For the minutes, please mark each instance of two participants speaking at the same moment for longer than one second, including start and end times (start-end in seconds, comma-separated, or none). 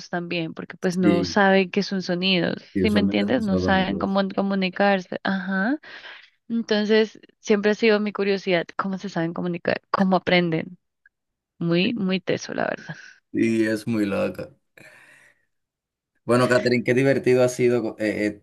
2.7-4.2